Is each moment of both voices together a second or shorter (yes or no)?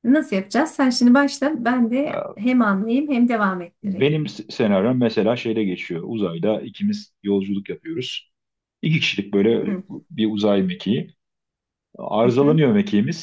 yes